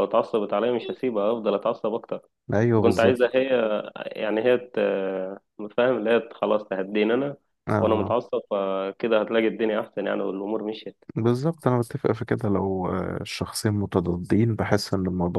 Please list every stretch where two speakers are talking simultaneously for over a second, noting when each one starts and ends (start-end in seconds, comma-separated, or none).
none